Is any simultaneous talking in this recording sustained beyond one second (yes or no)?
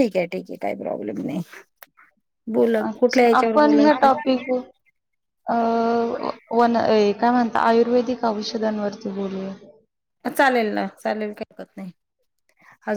yes